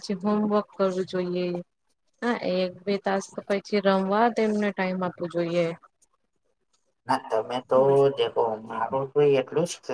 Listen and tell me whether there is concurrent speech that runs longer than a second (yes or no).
no